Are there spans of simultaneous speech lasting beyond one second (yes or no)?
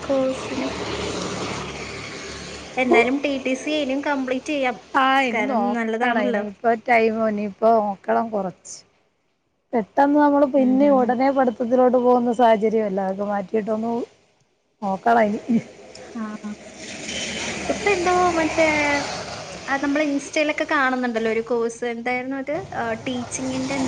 no